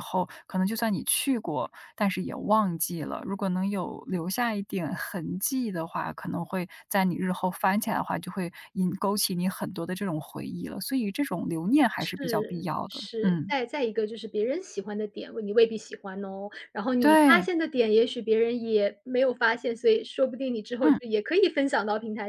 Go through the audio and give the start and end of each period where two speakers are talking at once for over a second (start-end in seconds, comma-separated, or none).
12.0-13.5